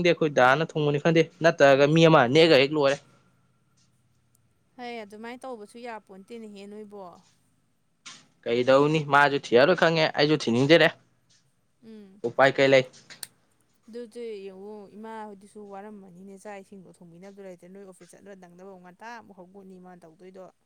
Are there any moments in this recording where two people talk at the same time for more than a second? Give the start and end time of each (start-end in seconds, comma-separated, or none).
none